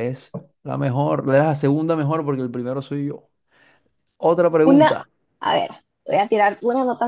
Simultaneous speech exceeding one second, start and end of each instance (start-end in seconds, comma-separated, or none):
none